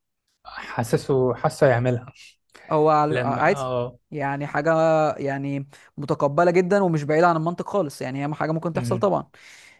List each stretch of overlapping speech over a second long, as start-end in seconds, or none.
none